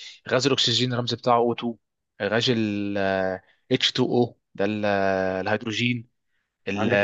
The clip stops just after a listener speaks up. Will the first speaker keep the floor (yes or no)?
no